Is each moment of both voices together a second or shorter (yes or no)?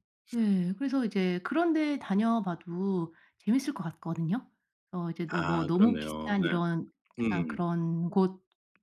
no